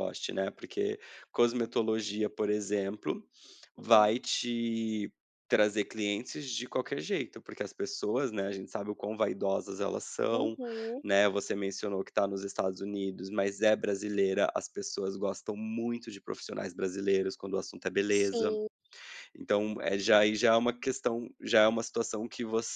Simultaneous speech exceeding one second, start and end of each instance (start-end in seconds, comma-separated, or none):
none